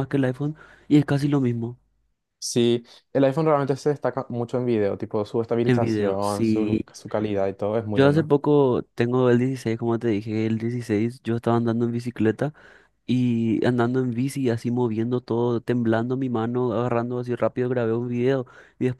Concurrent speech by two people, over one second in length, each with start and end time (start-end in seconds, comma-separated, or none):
5.6-6.9